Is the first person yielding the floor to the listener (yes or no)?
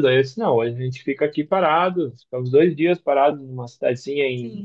no